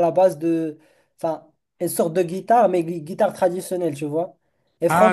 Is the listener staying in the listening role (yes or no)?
no